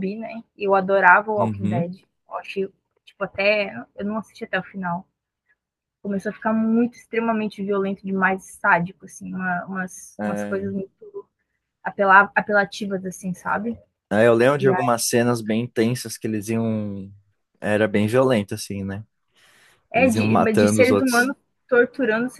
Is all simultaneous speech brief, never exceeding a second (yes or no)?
no